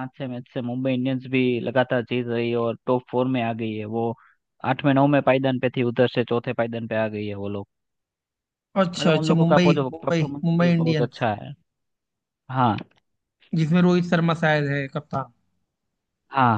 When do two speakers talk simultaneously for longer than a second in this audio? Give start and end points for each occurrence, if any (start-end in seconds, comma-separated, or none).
9.0-11.2